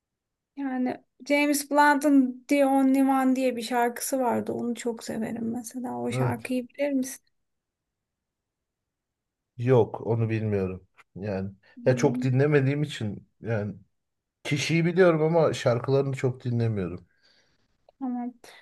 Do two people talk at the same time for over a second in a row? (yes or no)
no